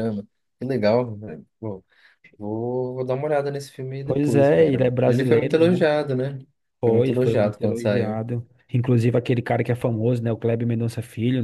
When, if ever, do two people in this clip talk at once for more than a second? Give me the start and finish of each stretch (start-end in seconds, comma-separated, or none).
4.0-5.8, 6.8-8.2